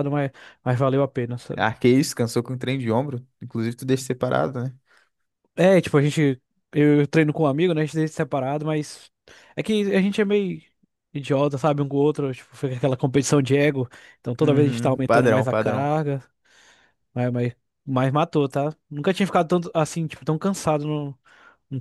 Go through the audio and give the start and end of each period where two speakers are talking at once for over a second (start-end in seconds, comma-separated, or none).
14.4-15.9